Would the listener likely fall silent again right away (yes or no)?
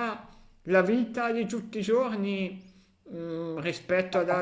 yes